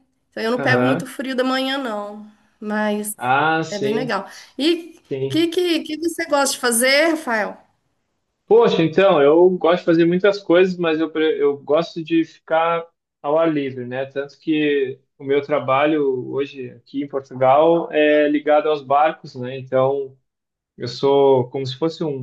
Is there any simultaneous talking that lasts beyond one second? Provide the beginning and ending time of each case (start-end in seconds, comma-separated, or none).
none